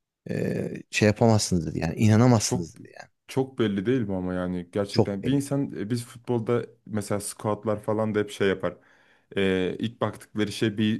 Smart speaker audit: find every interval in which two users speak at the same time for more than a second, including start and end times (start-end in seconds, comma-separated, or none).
none